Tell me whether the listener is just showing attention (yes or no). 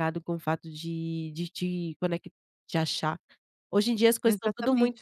yes